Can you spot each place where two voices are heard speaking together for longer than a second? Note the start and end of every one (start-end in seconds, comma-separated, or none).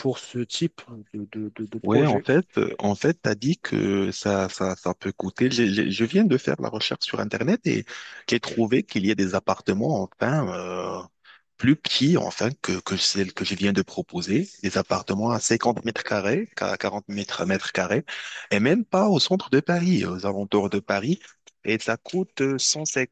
none